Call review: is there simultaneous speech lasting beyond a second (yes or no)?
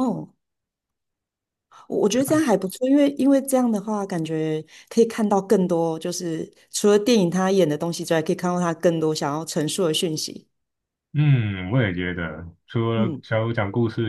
no